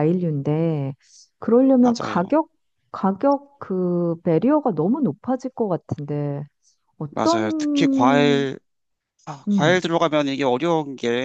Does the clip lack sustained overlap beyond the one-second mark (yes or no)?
no